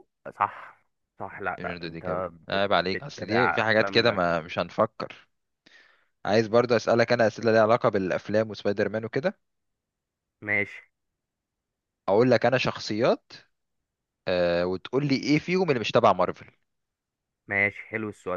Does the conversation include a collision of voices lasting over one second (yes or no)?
yes